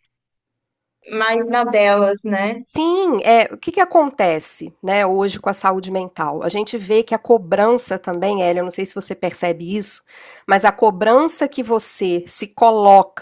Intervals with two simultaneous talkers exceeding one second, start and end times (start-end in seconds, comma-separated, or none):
none